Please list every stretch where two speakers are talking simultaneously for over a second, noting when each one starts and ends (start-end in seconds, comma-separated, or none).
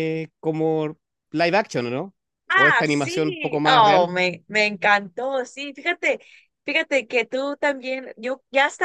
2.5-4.1